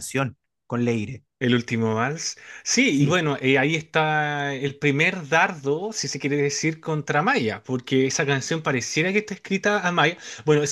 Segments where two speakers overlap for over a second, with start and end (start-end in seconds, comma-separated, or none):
none